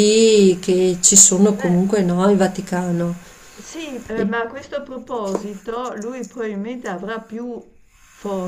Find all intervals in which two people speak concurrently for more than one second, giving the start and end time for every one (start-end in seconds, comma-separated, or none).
none